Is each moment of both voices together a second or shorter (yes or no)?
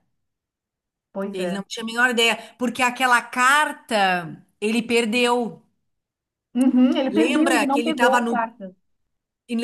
no